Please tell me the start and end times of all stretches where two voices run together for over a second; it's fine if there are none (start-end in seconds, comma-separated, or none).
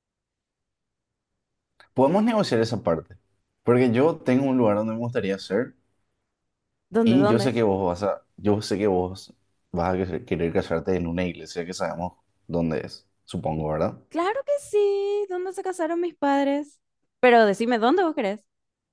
none